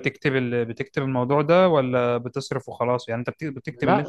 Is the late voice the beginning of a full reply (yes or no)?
yes